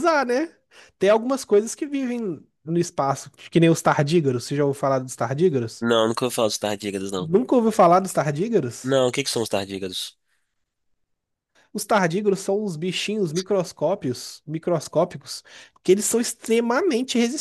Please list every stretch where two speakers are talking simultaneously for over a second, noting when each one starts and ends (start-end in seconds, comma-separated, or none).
none